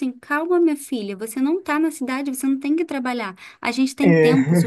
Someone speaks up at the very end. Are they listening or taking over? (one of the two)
listening